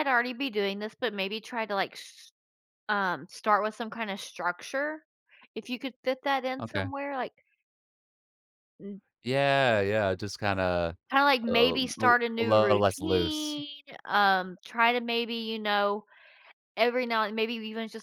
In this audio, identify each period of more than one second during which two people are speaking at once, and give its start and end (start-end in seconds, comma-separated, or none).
11.5-13.6